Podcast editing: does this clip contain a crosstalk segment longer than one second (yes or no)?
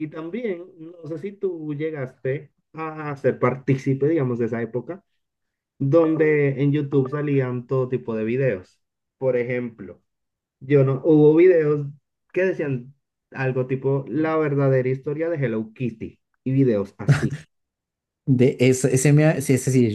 no